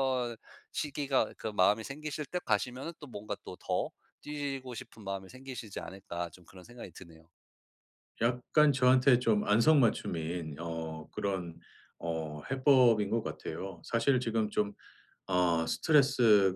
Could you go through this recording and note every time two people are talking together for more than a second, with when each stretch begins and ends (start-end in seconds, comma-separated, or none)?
none